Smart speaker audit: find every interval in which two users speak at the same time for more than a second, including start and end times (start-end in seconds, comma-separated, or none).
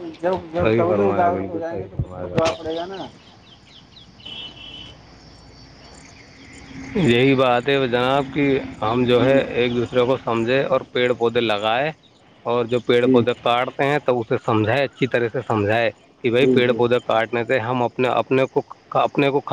0.6-2.6